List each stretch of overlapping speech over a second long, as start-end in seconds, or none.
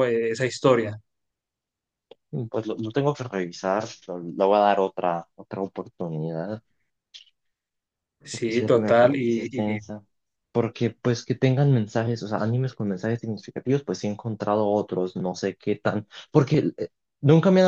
8.3-9.8